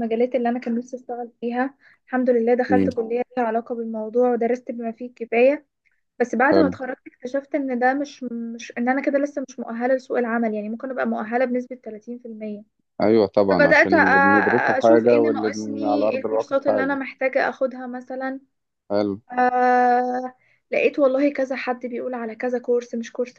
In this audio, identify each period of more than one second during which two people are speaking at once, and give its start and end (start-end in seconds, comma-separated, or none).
14.8-17.0